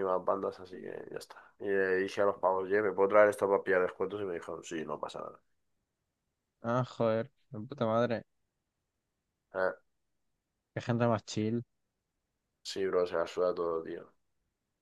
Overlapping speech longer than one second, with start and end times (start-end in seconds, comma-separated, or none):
none